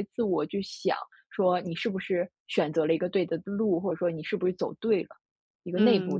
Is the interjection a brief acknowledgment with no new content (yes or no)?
no